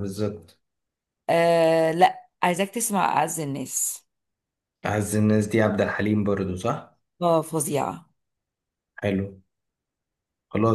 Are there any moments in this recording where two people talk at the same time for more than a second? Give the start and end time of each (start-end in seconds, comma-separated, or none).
none